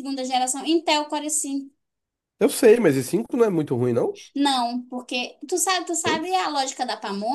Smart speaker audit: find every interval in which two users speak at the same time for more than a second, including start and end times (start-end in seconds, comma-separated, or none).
none